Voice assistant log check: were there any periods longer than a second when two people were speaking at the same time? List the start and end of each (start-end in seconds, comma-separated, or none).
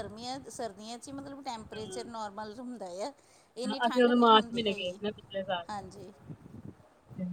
3.6-5.0